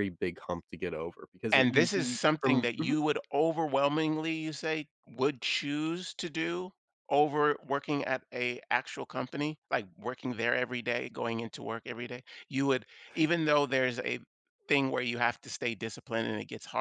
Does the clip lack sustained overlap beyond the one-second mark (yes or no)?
no